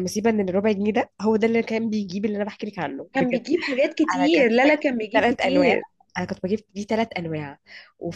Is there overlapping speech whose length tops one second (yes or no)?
yes